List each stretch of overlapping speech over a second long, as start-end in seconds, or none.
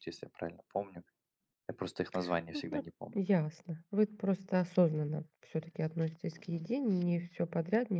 none